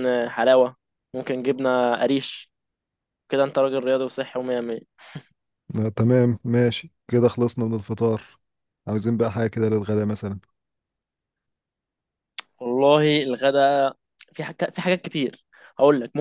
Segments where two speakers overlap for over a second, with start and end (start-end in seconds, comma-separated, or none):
none